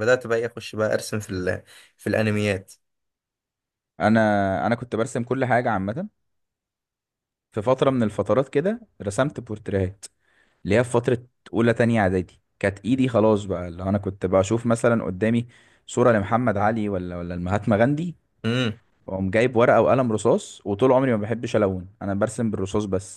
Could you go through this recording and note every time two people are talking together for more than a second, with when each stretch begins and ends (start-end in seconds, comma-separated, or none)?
none